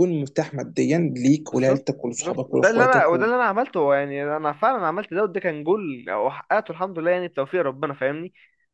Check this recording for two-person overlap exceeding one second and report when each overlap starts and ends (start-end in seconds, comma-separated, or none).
1.5-3.3